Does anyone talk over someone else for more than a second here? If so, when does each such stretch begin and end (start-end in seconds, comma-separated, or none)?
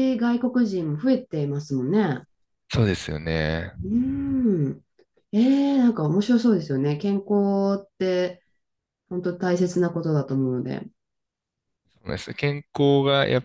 none